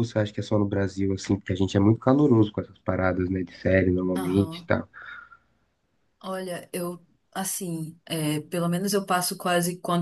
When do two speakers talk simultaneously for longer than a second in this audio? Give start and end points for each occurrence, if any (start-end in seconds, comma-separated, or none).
none